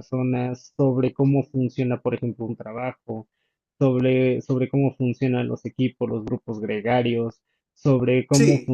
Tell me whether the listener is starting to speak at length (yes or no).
no